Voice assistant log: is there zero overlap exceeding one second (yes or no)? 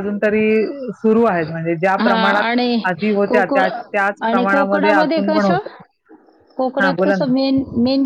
no